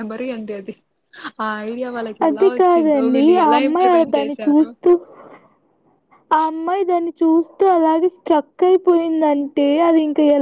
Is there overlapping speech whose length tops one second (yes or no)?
yes